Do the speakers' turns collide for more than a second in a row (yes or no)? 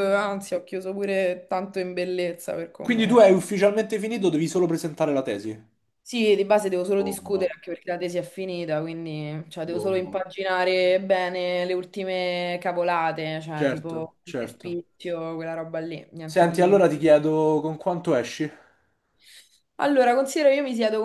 yes